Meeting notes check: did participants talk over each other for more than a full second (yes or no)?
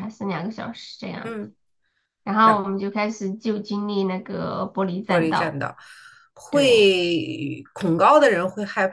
no